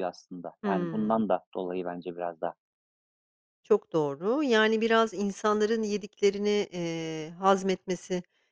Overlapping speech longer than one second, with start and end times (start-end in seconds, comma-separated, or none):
none